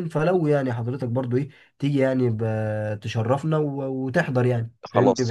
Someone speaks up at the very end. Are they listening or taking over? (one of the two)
taking over